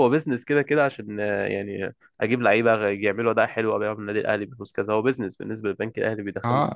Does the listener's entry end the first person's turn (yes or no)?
yes